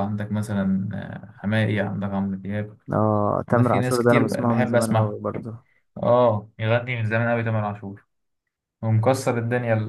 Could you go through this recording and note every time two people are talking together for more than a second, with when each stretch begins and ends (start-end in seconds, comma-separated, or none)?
3.5-5.2